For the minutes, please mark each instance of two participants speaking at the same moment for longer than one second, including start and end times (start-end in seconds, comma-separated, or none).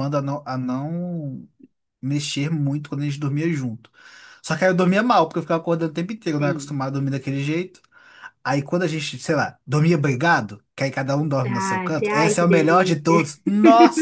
11.5-13.3